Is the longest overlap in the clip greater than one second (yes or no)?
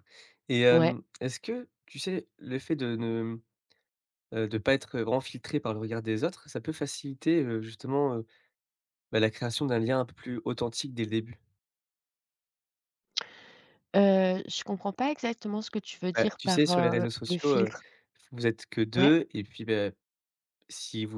yes